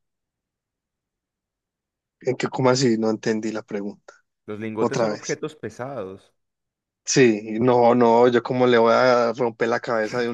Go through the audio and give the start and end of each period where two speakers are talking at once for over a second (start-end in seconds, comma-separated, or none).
none